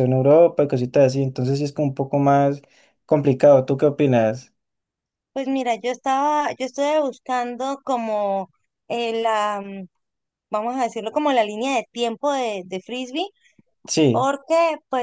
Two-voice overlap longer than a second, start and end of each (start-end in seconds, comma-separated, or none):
none